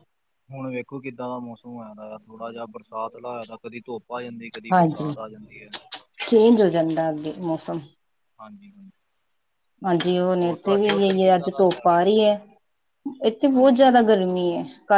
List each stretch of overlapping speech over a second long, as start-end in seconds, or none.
10.4-12.1